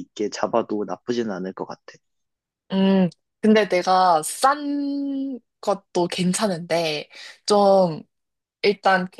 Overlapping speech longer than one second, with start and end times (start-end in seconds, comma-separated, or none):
none